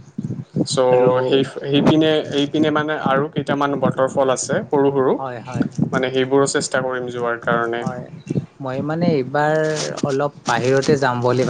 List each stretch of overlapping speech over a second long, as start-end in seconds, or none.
none